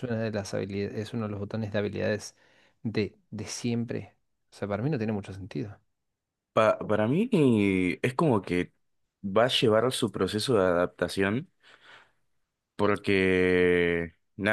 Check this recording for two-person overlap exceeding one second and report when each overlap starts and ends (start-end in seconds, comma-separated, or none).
none